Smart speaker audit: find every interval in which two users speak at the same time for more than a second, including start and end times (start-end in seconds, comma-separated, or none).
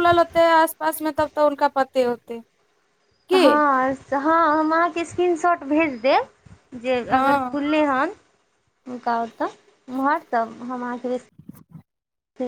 none